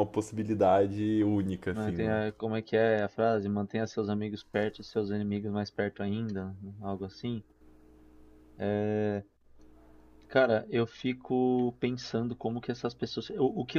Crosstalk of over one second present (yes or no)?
no